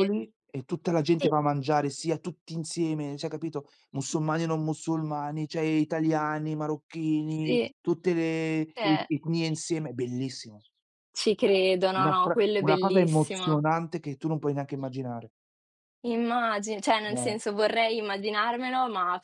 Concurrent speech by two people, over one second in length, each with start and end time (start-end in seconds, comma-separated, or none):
12.0-13.6